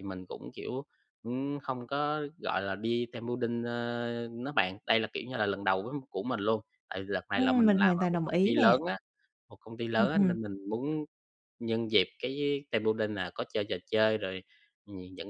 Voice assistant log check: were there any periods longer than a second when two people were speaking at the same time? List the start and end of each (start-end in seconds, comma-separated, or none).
7.3-8.8